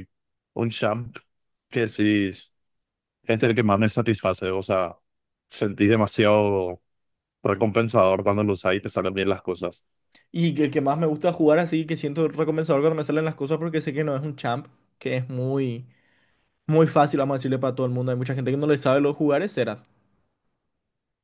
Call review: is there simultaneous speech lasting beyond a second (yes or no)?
no